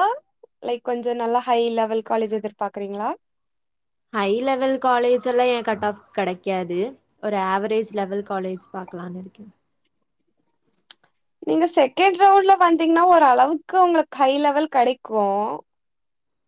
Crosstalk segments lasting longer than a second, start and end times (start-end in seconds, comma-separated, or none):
none